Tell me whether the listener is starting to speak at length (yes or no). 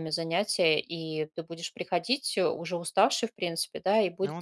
no